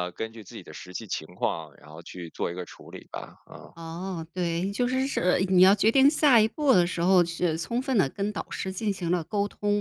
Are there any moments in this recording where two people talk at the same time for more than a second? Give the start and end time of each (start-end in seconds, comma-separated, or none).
none